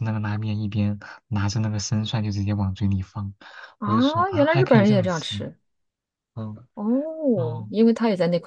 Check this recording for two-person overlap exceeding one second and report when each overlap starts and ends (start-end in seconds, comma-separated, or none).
3.8-5.3